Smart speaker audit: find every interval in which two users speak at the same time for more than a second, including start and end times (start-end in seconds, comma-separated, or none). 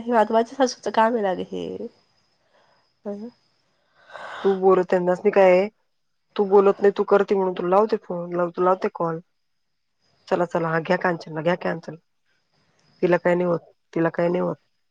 none